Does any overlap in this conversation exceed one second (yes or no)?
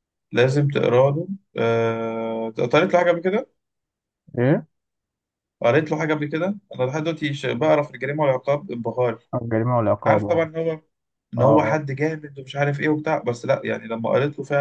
no